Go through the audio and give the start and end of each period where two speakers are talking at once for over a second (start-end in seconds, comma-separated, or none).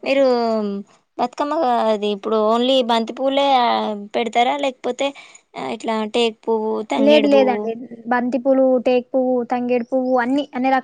none